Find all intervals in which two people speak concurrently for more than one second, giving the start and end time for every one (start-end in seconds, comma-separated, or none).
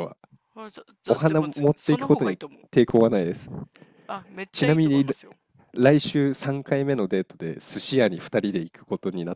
1.1-2.6